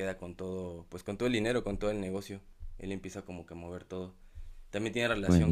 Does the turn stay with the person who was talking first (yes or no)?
yes